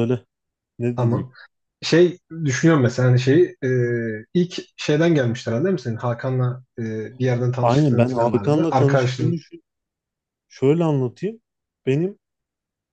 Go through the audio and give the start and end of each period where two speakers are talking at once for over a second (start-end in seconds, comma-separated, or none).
7.6-9.4